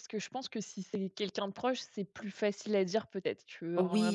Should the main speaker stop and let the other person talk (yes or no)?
yes